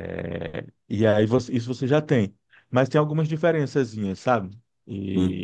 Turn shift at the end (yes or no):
yes